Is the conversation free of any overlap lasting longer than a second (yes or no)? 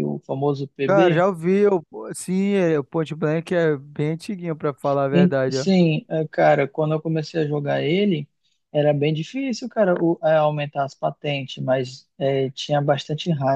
yes